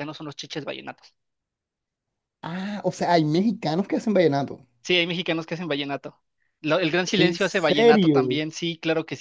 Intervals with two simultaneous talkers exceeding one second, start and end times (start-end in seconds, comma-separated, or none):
7.1-8.4